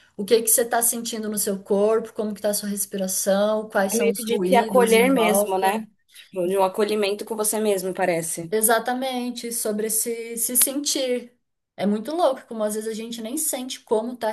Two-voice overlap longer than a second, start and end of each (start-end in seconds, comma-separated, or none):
3.9-5.8